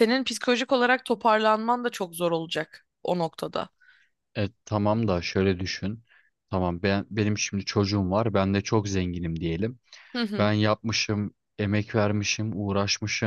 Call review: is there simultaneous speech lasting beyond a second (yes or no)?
no